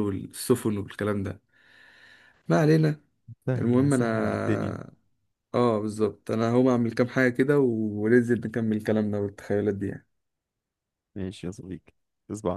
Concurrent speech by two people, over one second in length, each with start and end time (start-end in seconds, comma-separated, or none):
none